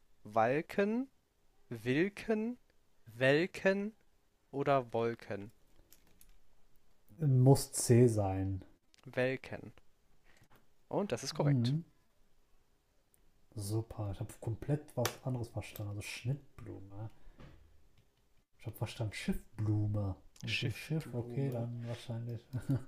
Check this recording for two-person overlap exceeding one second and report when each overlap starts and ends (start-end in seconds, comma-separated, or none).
20.5-21.7